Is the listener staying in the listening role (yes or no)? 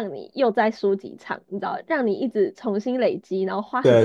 no